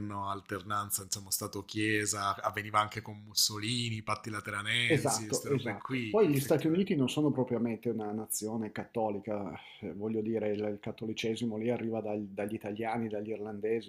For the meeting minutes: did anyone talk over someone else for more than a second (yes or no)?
yes